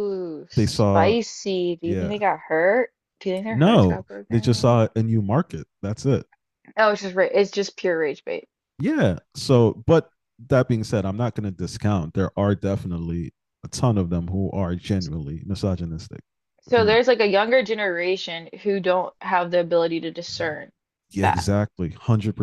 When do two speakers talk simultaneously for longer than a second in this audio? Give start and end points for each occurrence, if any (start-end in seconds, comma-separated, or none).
3.5-4.8